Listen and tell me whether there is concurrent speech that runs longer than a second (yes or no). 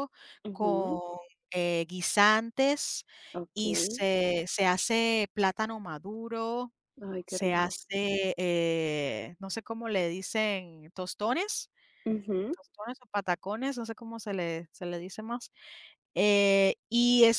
no